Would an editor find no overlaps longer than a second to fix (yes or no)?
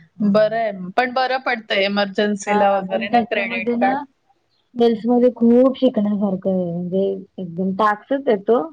yes